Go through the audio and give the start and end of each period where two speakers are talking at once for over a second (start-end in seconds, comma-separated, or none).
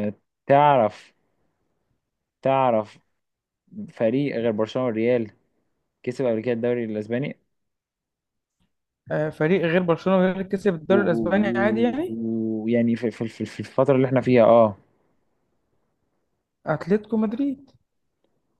10.9-12.2